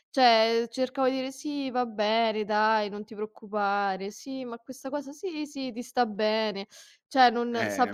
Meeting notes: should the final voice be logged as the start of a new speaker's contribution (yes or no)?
yes